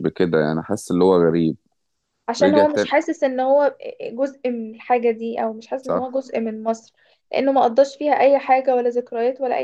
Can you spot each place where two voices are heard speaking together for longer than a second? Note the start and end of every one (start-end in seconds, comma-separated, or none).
none